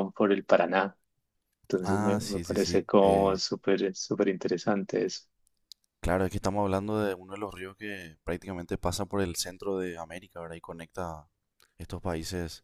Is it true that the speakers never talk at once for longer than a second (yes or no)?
no